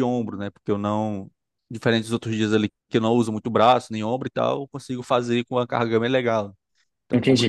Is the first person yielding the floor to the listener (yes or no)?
yes